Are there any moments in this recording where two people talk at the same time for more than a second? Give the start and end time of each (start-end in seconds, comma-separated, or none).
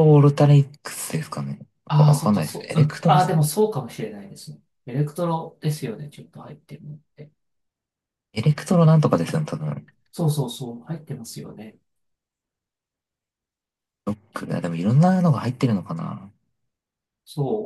2.0-3.3